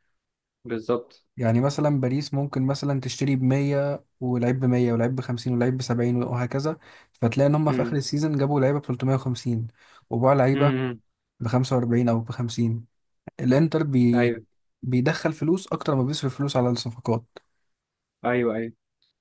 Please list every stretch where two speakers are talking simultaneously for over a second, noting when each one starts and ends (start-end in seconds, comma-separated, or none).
none